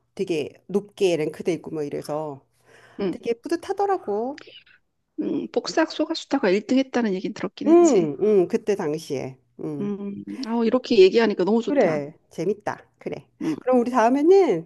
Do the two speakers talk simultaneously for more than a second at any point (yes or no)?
no